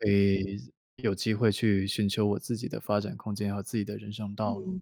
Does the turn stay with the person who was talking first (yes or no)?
no